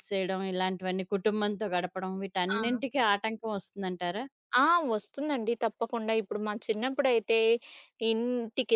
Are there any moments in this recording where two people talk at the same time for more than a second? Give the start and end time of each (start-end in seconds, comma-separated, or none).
none